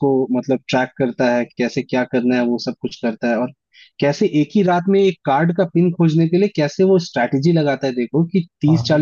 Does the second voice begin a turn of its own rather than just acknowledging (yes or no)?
no